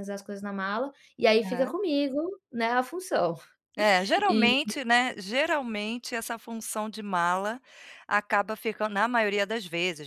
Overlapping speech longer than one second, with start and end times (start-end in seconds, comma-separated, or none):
none